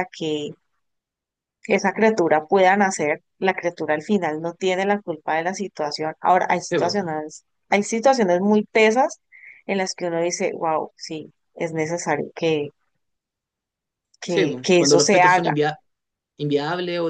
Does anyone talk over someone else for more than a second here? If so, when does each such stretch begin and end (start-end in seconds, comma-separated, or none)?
14.3-15.5